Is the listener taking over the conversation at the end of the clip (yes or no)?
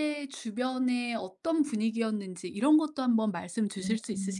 yes